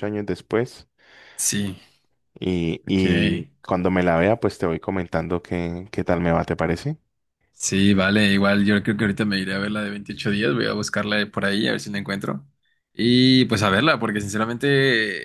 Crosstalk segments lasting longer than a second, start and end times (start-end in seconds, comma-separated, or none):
none